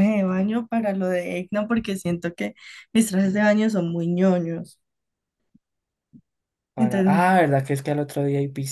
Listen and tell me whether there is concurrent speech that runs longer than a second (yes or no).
no